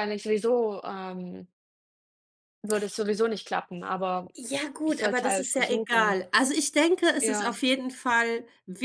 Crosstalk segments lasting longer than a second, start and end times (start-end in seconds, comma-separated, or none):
4.8-6.2